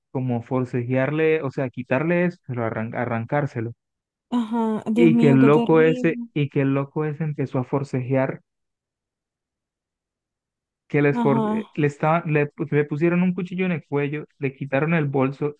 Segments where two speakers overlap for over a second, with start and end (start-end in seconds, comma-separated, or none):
5.0-6.3